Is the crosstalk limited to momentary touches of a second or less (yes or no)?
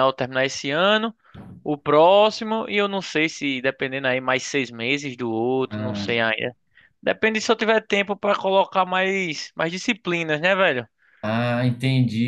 yes